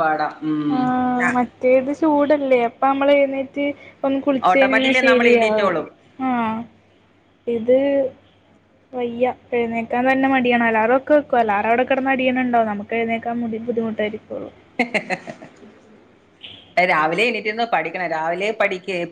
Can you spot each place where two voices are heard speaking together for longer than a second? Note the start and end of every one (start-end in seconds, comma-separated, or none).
4.5-5.8